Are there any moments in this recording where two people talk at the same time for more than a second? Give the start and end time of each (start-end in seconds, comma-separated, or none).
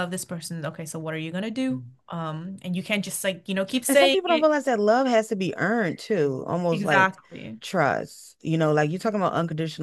none